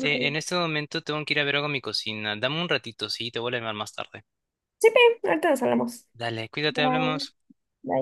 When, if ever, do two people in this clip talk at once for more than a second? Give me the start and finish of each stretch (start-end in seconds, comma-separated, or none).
none